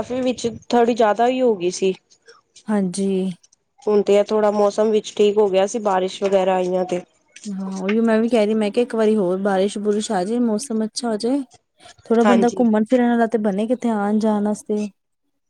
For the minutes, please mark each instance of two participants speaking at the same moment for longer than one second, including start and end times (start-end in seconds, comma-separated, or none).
none